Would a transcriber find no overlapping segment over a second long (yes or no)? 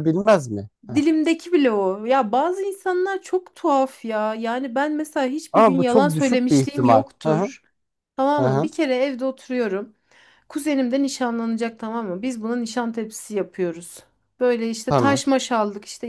no